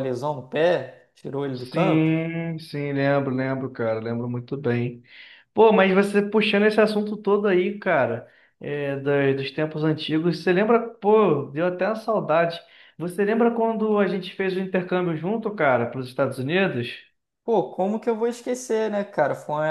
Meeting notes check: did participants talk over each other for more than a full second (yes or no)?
no